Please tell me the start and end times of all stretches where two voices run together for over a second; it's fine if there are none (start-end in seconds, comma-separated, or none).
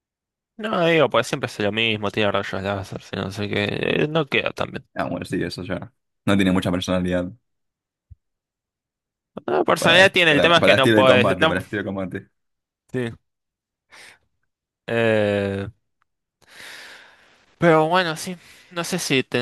9.8-11.6